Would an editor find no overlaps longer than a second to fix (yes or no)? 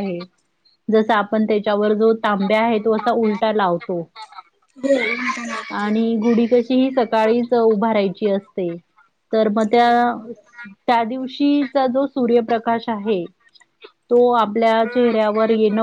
yes